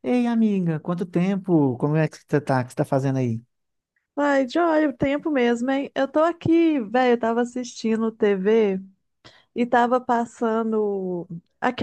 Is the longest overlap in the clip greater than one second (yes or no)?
no